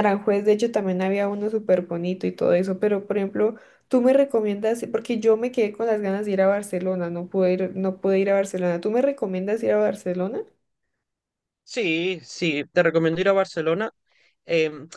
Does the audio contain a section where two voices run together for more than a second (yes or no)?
no